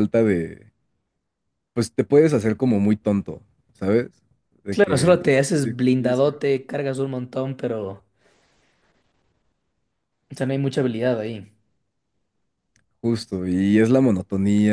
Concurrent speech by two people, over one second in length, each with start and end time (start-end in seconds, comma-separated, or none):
4.7-6.4